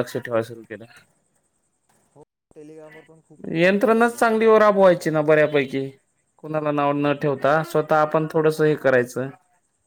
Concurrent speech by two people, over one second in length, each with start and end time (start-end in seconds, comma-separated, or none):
3.6-5.4